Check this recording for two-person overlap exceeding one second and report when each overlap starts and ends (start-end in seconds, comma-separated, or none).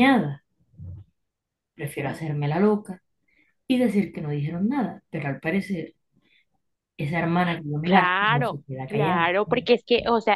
7.8-9.3